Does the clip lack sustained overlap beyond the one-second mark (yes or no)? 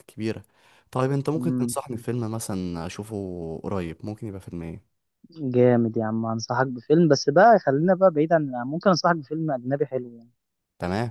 yes